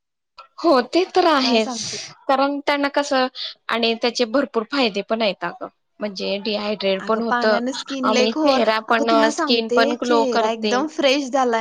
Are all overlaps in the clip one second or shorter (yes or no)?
no